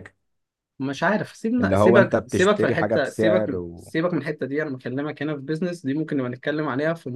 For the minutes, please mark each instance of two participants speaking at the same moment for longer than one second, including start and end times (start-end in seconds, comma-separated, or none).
1.6-3.9